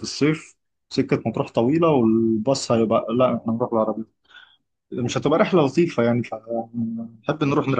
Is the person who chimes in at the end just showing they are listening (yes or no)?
no